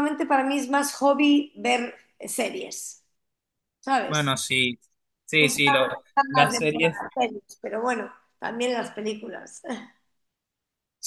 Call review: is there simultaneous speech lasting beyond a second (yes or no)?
yes